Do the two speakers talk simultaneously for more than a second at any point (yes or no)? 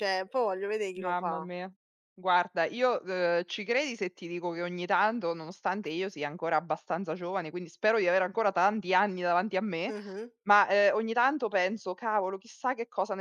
no